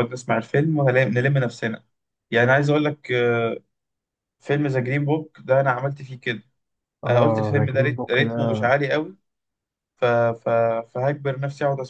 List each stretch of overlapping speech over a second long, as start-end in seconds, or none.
7.1-8.8